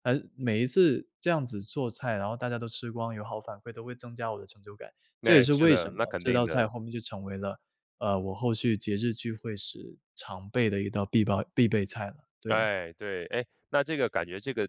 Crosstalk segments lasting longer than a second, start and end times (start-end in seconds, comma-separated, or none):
5.2-6.7